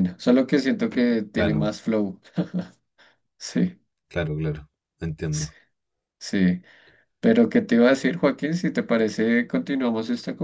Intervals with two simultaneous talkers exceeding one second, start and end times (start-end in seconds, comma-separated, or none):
none